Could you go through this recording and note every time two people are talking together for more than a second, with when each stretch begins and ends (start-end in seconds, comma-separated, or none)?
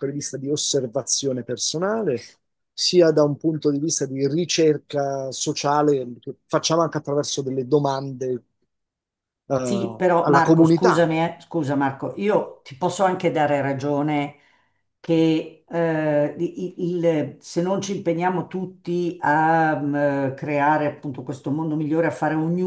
9.6-11.1